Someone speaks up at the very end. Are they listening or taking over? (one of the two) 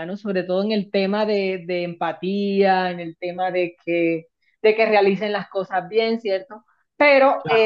listening